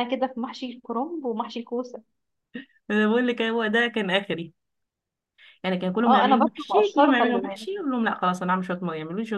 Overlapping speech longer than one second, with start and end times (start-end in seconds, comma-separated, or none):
6.0-7.7